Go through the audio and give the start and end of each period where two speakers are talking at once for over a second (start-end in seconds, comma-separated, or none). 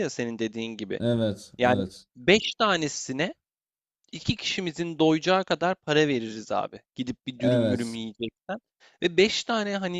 none